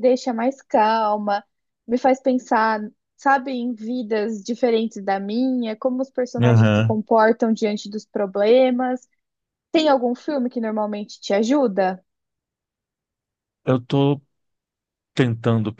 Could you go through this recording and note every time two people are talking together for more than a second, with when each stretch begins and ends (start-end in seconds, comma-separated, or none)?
none